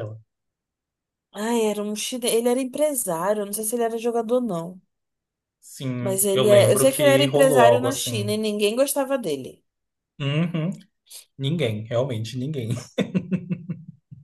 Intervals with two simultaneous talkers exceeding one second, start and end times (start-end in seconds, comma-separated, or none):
6.0-8.3